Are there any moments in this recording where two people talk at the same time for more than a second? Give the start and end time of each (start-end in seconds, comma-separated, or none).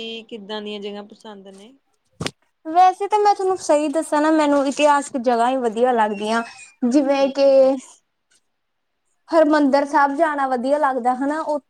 none